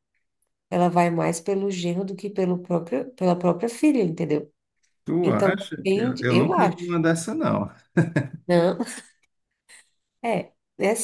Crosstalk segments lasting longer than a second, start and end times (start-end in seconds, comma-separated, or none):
5.2-7.0